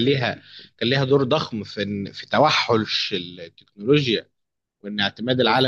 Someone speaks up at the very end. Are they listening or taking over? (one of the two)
listening